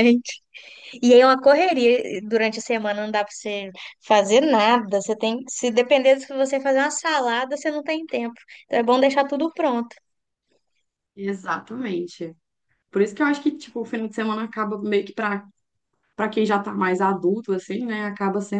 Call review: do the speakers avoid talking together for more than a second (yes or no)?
yes